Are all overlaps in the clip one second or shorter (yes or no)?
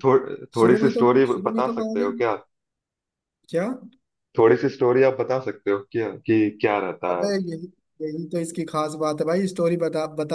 no